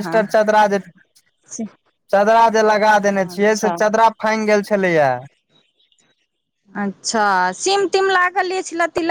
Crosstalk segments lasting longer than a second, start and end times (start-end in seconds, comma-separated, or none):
none